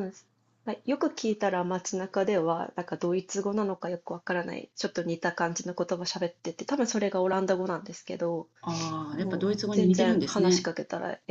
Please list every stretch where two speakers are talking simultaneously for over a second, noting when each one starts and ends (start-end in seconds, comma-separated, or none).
9.2-10.7